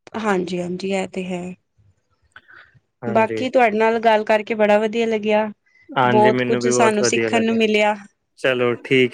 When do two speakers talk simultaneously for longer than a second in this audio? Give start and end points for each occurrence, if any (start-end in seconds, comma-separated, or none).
6.2-7.6